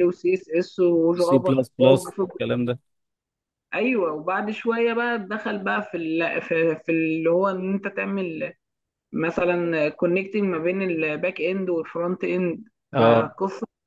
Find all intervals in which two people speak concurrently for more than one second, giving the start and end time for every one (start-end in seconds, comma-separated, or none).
none